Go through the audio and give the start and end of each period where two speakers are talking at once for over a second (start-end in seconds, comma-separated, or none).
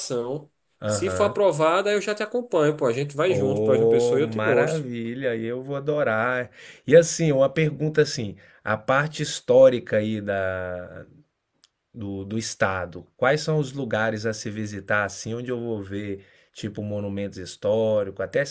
3.3-4.8